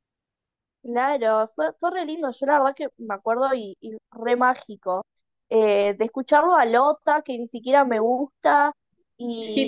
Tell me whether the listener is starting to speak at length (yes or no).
no